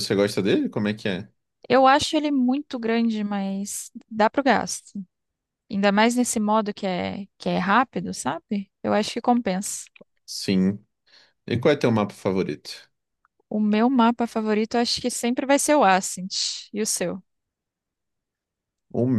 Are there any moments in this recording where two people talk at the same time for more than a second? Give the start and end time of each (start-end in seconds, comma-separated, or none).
none